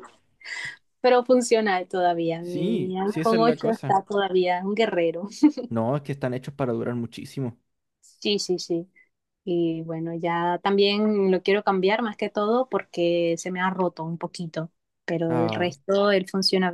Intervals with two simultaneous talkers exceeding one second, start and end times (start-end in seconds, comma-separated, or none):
2.4-4.0